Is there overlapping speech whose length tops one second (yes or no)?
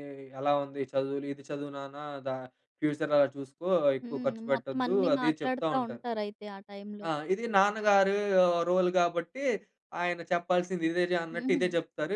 yes